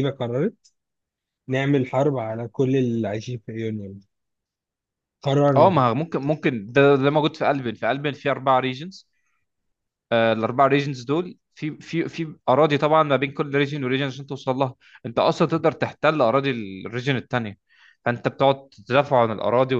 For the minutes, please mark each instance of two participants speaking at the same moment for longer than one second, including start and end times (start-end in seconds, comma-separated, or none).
none